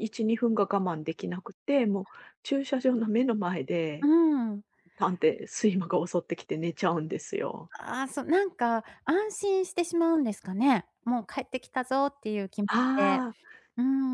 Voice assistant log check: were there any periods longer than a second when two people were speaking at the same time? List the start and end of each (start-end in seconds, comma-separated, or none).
none